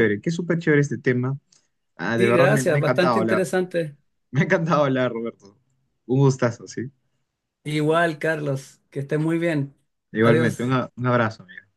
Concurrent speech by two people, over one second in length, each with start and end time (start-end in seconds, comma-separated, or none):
2.1-3.5